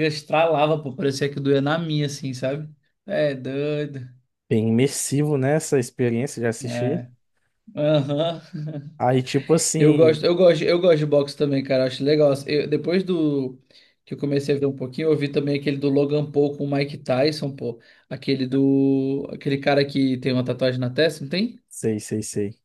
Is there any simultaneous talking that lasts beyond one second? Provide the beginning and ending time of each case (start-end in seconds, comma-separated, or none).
none